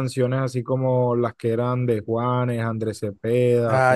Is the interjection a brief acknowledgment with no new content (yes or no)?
no